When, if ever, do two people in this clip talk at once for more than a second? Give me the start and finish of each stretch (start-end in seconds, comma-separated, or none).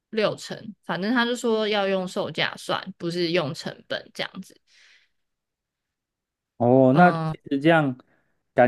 none